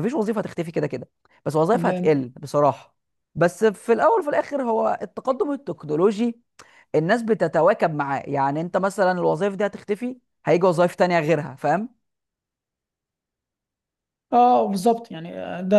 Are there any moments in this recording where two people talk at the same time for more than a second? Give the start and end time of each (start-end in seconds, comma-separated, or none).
none